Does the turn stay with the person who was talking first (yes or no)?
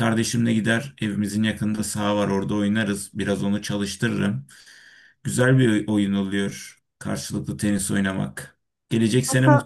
yes